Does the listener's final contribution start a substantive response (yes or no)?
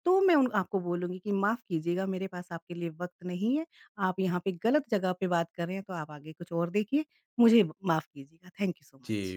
yes